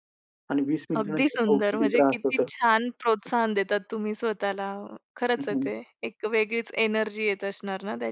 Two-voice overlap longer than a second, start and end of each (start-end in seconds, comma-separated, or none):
1.0-2.5